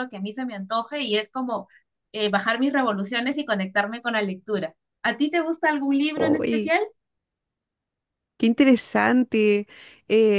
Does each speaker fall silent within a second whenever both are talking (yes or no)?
yes